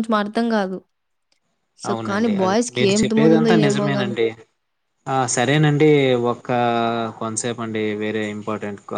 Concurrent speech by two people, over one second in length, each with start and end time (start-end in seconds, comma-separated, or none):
1.9-4.2